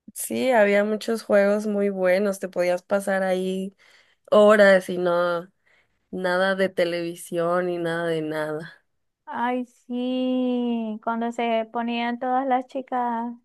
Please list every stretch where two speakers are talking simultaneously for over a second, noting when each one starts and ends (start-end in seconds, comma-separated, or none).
none